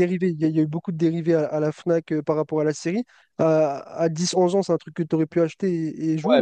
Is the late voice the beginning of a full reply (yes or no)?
yes